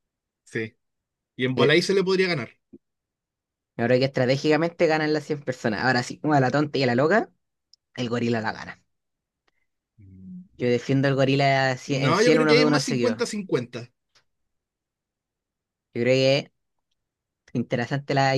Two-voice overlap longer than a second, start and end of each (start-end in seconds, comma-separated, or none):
11.9-13.2